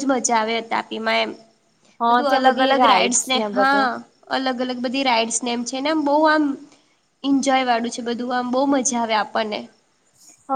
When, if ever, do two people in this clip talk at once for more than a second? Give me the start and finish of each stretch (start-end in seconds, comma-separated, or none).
2.1-3.9